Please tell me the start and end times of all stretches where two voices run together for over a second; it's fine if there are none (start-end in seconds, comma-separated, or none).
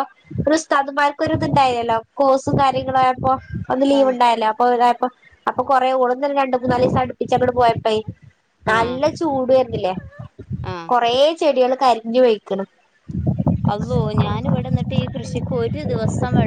none